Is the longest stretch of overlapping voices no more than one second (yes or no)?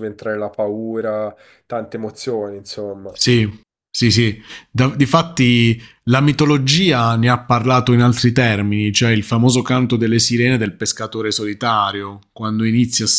yes